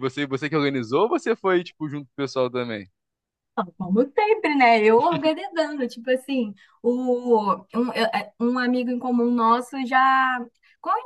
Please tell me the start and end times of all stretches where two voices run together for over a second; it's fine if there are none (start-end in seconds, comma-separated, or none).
none